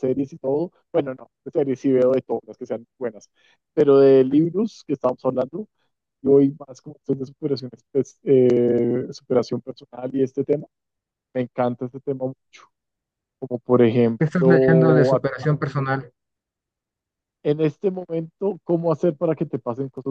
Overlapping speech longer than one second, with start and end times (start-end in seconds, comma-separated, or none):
14.2-15.5